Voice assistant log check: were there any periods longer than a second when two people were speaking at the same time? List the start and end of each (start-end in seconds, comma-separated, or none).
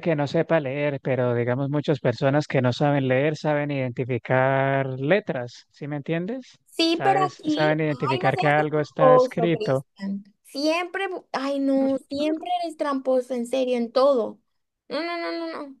6.7-9.8